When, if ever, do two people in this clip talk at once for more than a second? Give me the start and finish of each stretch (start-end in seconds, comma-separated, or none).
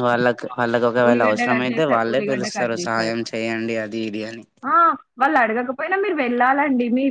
1.1-3.2